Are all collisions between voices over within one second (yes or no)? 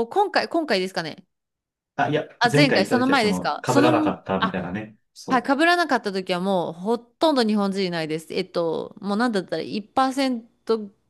no